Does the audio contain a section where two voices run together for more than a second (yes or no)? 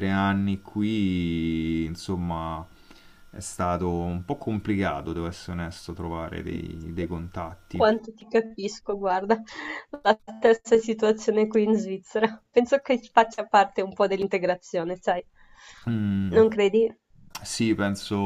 no